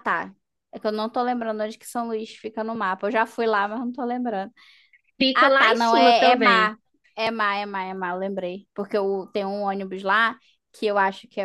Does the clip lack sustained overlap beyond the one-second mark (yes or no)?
no